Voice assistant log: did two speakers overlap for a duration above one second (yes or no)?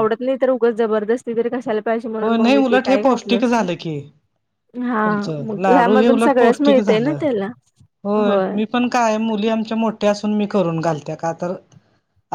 yes